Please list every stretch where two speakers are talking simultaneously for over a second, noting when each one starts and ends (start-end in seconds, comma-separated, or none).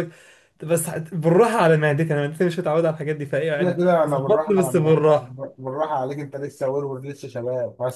3.6-5.1